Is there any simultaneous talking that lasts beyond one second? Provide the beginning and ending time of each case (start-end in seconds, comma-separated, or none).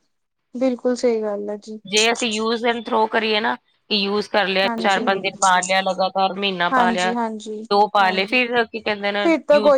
none